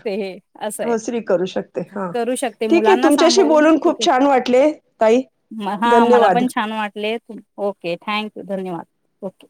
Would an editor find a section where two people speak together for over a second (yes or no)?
no